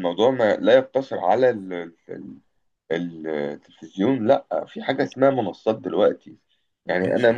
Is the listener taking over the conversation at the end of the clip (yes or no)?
no